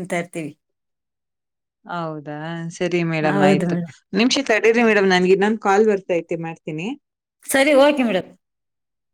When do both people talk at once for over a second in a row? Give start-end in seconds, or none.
none